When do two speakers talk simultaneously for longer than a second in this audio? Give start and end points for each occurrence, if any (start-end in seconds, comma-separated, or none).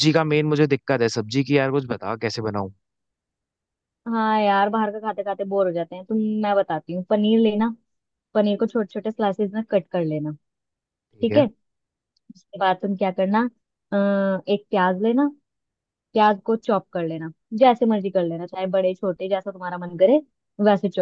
none